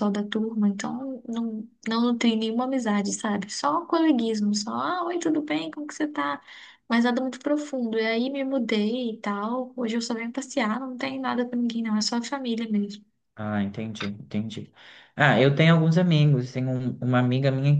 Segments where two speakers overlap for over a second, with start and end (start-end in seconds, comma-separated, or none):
none